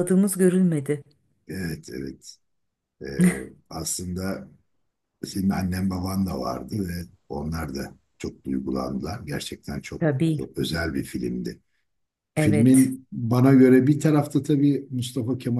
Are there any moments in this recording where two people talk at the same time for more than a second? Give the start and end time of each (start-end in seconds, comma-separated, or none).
none